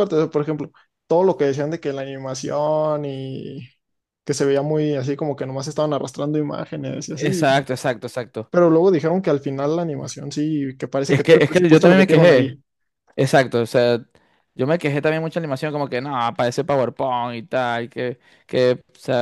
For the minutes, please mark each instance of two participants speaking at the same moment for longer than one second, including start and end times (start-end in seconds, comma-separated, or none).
11.1-12.6